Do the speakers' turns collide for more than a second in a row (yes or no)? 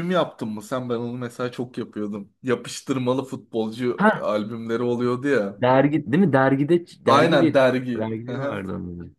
yes